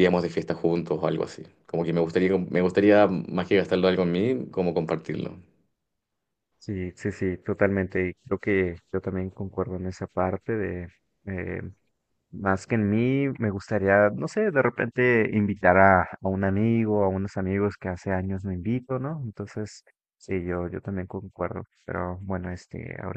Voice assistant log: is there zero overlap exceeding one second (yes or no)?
yes